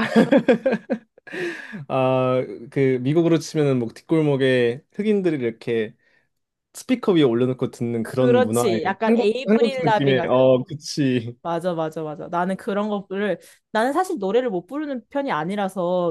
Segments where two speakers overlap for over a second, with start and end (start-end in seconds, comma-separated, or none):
8.0-10.2